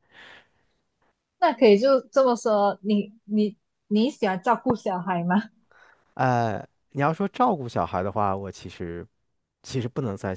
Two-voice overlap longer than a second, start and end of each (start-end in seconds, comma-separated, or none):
none